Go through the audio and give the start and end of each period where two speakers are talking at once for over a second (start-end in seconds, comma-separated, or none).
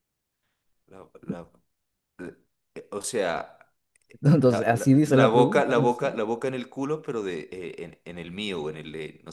4.4-6.0